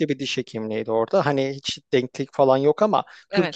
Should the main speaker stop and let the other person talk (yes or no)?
no